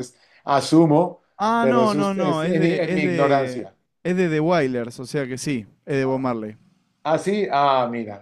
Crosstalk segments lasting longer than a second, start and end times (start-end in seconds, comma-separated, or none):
1.6-3.7